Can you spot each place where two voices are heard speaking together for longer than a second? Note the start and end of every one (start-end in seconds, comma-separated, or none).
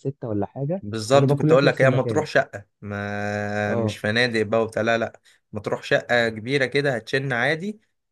0.8-2.2